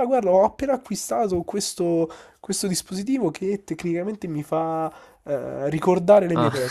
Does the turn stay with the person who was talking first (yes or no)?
yes